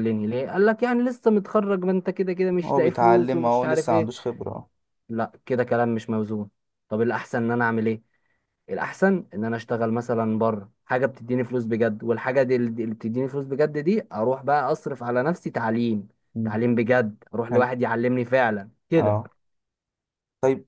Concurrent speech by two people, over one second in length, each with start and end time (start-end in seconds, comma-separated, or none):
2.6-4.1